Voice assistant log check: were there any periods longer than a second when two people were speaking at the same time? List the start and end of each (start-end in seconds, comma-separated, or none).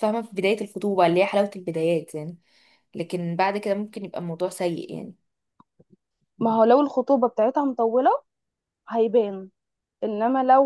none